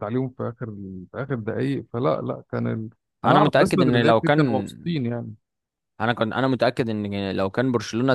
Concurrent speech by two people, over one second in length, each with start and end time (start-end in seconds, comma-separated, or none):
3.2-4.7